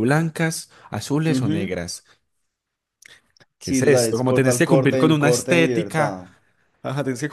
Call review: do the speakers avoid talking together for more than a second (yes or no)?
no